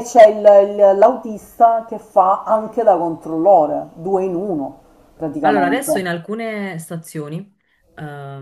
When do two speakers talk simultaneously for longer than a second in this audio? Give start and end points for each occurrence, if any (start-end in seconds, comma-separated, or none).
none